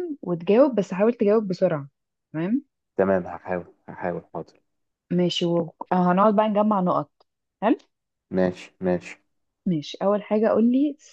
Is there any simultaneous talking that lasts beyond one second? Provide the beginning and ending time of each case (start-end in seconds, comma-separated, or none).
none